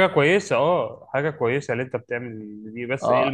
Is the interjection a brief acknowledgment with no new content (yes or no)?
no